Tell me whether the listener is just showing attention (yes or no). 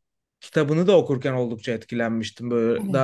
yes